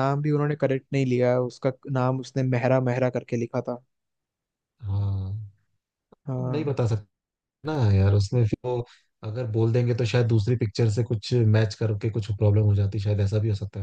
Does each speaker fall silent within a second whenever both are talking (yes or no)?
yes